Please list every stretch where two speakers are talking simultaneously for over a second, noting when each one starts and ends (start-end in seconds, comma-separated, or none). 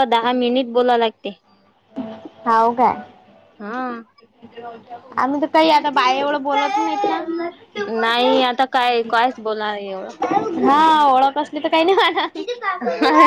none